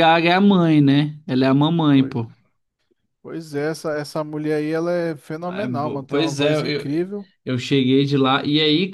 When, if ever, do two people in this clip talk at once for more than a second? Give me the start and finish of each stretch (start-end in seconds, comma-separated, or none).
5.5-6.8